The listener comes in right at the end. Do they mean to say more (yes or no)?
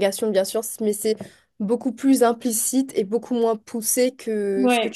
no